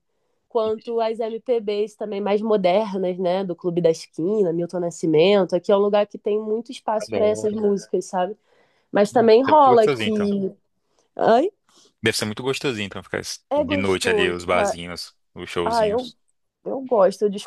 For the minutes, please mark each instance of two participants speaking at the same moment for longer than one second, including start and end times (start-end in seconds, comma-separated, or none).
9.1-10.3, 13.5-14.8